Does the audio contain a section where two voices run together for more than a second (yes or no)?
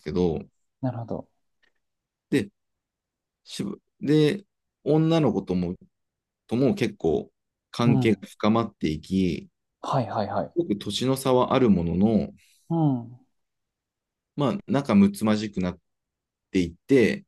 no